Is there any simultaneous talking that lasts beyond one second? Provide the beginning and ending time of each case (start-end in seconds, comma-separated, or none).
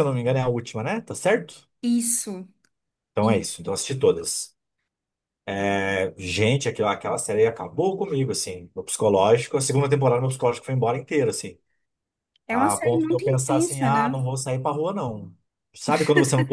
12.5-14.1